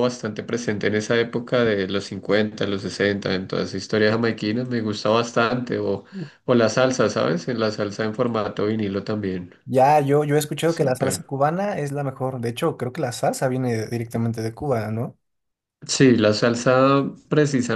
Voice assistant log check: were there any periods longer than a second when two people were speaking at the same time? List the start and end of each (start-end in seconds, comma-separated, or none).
none